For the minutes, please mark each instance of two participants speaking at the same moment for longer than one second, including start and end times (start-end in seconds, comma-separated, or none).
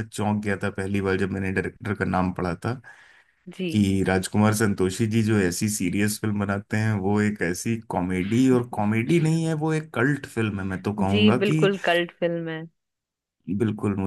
none